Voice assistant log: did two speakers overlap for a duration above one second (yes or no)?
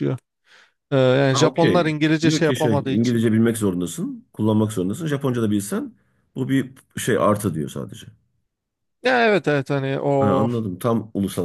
yes